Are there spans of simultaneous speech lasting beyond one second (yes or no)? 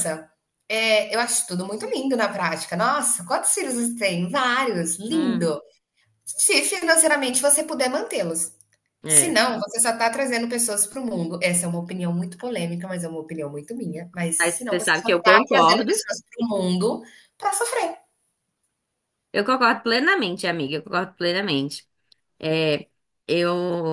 yes